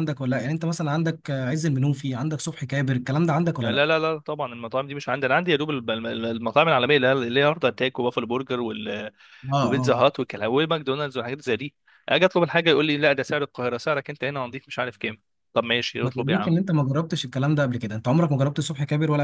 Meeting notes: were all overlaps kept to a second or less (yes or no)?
yes